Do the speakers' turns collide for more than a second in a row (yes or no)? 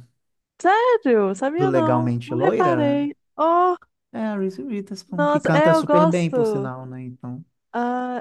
yes